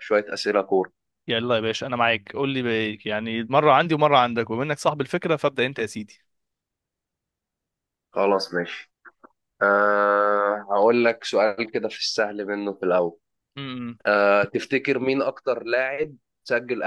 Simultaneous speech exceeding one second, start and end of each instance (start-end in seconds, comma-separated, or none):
none